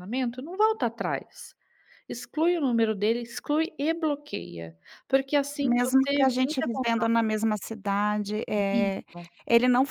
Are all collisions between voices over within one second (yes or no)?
no